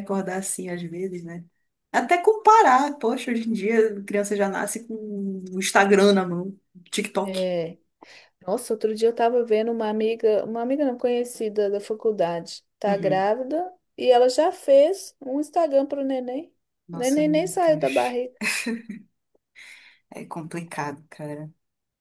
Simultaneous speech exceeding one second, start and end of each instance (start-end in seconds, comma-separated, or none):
16.9-18.2